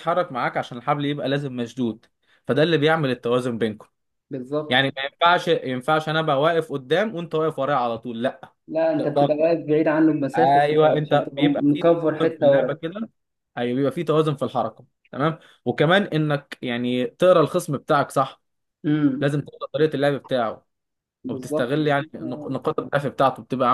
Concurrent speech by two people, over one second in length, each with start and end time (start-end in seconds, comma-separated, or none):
10.3-12.7